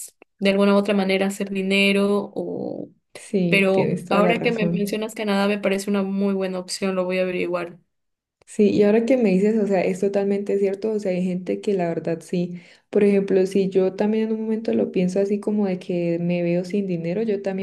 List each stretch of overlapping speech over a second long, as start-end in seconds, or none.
3.5-5.0